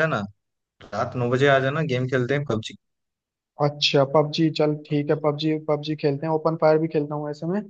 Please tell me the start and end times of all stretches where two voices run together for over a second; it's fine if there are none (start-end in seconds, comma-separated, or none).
none